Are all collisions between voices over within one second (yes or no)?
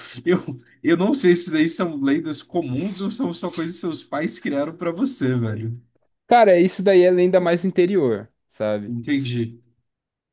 yes